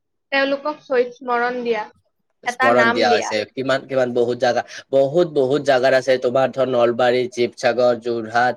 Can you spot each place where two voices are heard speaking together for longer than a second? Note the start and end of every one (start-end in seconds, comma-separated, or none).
none